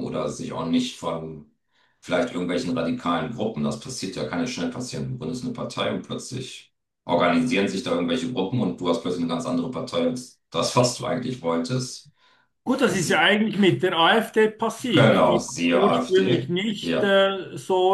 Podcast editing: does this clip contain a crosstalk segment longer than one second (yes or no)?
yes